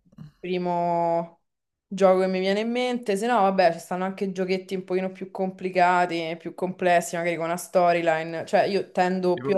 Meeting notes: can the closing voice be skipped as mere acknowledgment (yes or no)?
yes